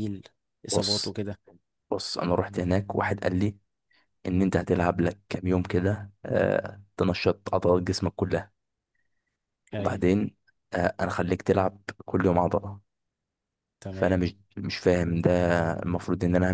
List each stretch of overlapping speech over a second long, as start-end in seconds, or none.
none